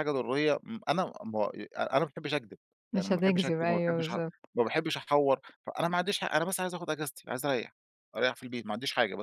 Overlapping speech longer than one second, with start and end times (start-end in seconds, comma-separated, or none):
3.0-4.2